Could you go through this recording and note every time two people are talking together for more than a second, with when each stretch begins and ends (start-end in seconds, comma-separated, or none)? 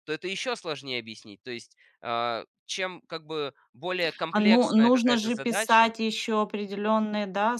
4.3-5.9